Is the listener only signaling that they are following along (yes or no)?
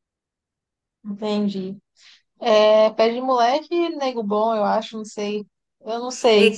no